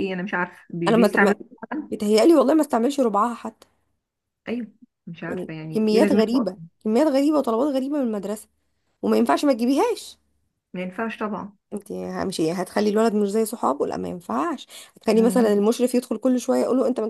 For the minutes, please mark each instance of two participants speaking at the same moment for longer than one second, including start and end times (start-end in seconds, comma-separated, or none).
5.3-6.6